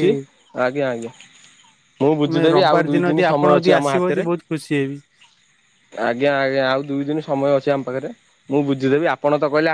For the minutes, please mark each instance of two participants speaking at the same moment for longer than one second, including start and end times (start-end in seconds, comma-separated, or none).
2.2-4.3